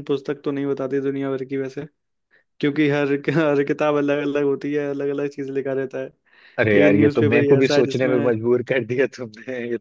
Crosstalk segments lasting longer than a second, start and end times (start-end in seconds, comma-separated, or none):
6.7-8.1